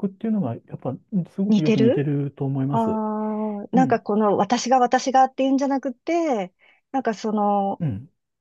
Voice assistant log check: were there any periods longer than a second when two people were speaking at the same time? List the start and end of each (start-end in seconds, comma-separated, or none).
none